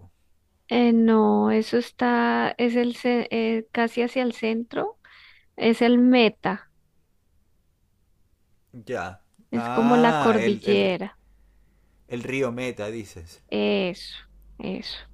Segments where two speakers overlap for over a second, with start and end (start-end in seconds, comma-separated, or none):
9.5-11.0